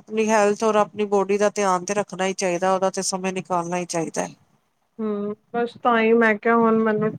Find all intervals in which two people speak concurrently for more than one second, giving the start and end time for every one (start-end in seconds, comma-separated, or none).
none